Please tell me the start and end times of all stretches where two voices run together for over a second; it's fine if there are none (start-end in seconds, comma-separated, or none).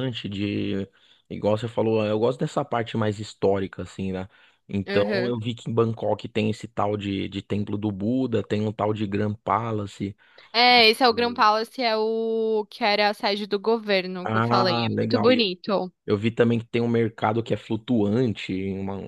14.2-15.4